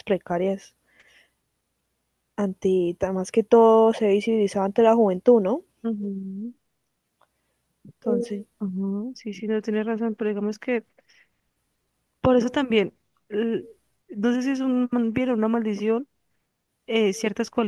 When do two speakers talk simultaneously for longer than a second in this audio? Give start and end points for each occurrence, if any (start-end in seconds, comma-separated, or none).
none